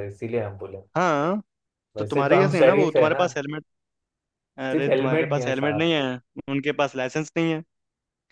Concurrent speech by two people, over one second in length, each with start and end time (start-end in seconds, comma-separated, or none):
2.0-3.2, 4.7-5.9